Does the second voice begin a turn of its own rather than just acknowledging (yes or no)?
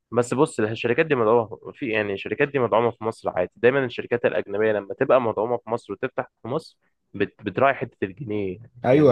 yes